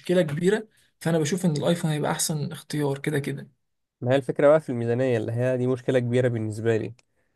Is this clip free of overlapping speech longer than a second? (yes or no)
yes